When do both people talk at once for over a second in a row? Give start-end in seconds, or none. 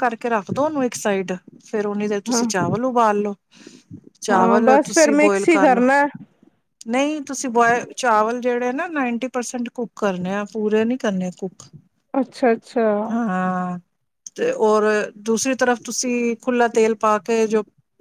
4.3-5.8